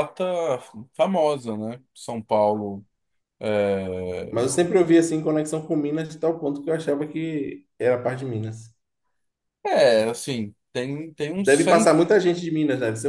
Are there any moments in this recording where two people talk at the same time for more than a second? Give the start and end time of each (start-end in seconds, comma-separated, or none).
none